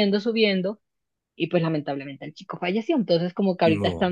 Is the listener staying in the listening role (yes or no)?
yes